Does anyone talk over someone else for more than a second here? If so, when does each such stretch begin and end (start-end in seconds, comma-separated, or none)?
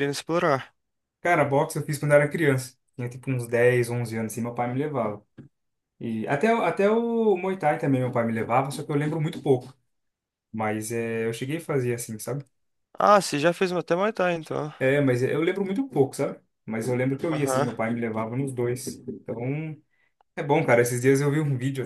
none